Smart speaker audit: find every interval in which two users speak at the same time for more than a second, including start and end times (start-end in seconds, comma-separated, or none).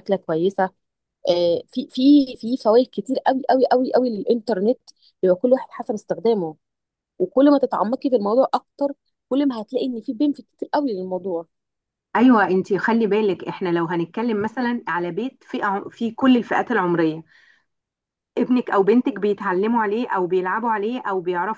none